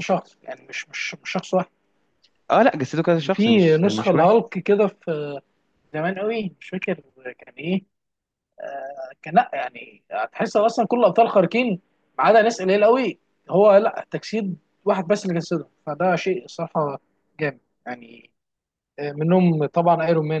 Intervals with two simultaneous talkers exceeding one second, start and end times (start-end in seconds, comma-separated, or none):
3.1-4.4